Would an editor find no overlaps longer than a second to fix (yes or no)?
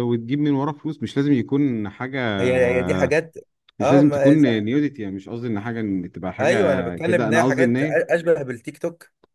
no